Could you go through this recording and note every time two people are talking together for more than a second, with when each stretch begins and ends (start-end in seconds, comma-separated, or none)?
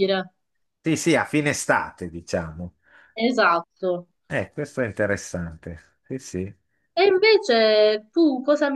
none